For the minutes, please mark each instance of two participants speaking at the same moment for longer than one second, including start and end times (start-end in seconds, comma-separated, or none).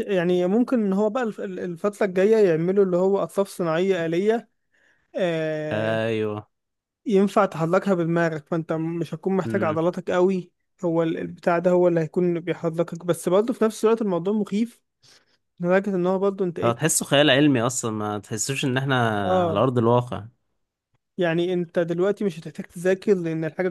none